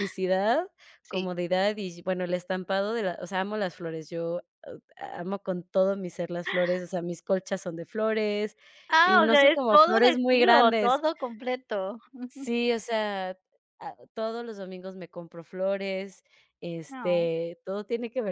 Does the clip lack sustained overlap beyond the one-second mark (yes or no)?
no